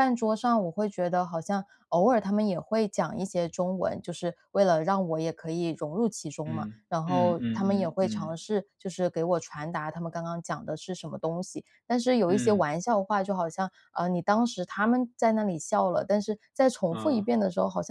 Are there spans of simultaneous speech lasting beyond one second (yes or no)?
yes